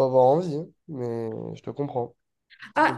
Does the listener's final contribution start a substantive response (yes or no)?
yes